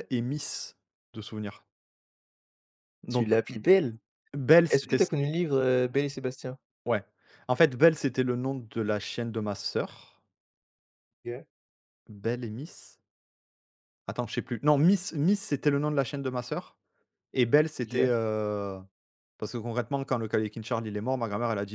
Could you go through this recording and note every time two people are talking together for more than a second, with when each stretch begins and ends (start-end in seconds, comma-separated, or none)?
none